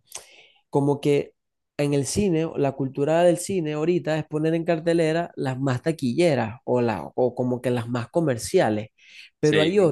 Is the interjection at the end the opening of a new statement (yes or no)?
no